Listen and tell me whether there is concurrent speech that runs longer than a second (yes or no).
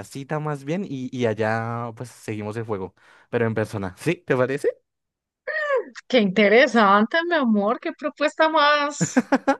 no